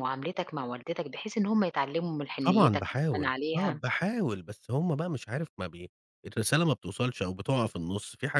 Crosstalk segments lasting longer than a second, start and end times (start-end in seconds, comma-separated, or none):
2.5-3.8